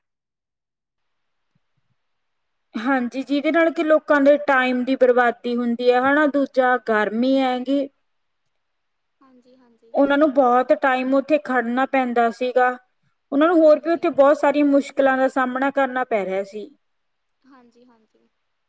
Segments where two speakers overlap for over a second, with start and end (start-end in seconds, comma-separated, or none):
none